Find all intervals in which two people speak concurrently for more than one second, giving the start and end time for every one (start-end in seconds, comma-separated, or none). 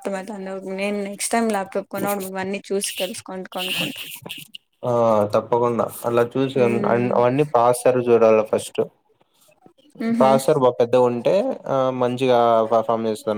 none